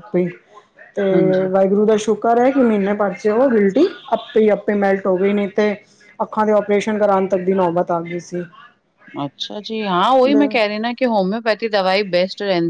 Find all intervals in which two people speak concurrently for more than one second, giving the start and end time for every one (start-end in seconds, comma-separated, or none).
none